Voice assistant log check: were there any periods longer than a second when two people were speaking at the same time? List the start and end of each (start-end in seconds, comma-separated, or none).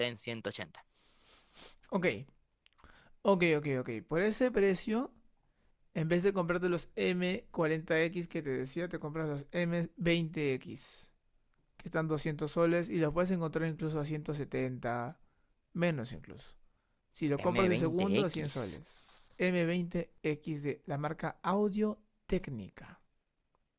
17.4-18.8